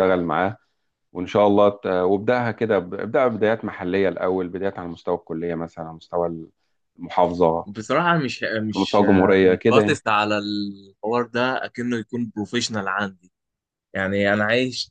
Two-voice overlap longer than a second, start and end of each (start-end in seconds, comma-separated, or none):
8.8-9.9